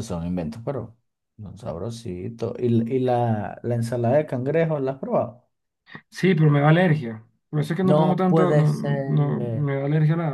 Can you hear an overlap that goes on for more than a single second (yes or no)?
yes